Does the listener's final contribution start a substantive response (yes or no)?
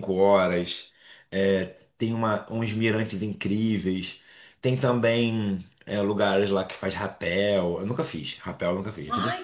yes